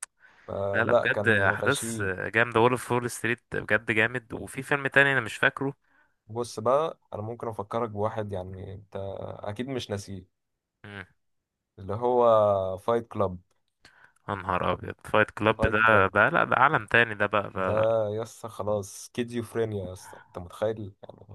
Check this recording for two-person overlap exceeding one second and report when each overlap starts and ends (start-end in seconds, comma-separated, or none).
0.7-2.1